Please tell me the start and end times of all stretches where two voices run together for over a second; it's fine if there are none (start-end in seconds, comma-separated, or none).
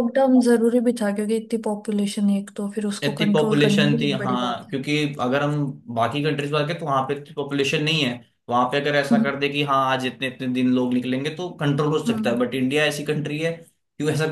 3.0-4.8